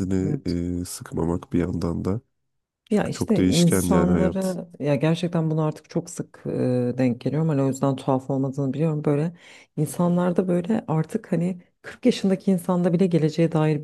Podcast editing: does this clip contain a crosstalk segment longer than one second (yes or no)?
yes